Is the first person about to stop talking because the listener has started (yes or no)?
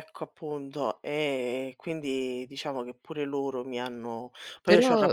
yes